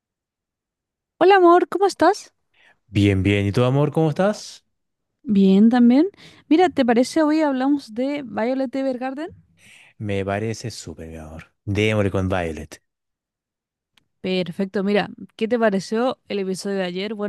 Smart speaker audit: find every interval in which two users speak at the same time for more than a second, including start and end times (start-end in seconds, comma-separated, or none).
none